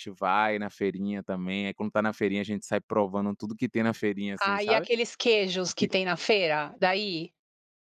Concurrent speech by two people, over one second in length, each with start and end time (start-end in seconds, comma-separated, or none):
none